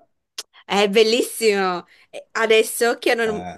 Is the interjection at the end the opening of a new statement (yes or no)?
no